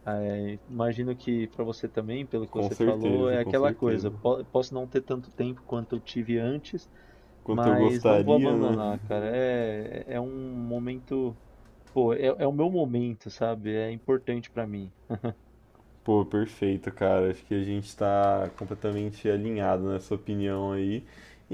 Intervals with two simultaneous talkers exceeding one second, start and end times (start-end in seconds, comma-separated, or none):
2.5-4.1, 7.5-8.8